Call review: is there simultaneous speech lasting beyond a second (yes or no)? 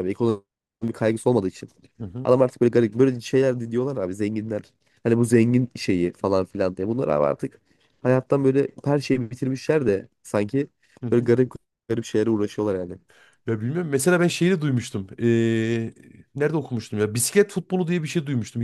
no